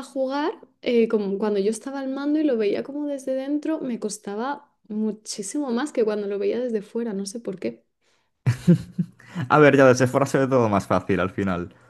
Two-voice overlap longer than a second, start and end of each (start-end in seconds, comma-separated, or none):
none